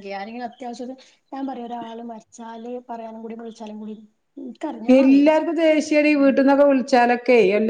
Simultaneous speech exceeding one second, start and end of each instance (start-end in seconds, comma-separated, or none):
none